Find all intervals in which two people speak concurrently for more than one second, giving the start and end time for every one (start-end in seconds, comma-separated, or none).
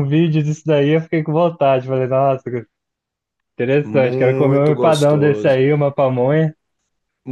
3.8-5.6